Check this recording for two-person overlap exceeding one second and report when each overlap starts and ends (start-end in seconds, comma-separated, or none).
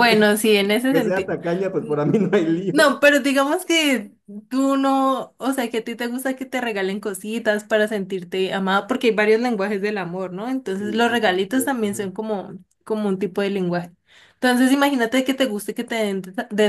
10.7-12.1